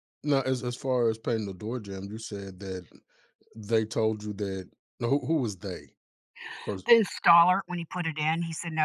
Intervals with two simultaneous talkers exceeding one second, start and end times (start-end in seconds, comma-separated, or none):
none